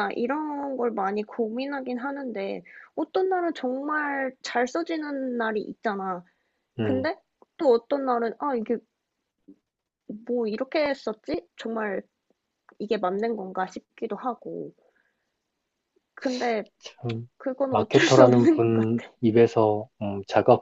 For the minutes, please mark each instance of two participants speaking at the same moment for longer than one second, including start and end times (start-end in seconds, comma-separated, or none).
17.7-19.1